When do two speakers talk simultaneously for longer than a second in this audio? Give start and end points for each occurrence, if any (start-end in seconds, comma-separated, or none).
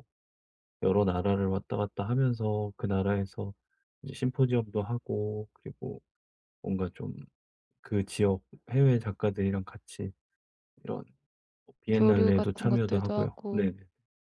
11.9-13.7